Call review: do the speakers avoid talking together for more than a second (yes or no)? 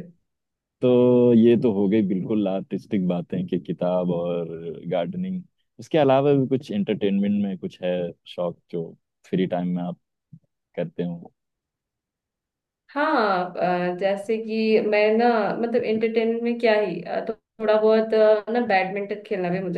yes